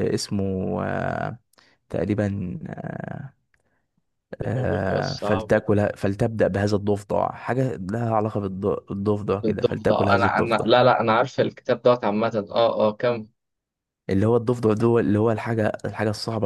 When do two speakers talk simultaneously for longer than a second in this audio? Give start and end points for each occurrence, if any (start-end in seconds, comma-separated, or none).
4.4-5.7, 9.4-10.7